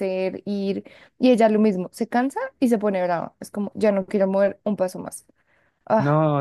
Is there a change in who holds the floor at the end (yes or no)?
yes